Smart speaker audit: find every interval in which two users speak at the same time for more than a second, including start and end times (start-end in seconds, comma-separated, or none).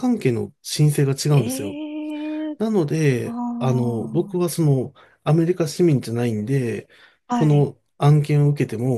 3.2-4.4